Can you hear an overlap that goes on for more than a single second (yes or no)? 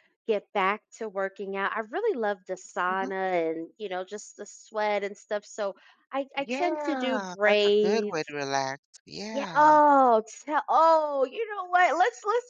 yes